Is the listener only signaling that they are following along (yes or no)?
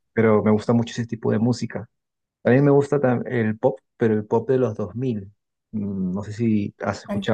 yes